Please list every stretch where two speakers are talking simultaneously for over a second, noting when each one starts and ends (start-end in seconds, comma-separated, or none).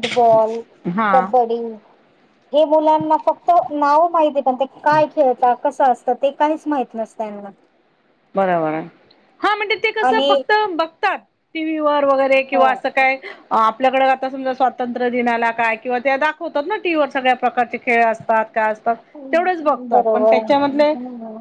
19.3-20.9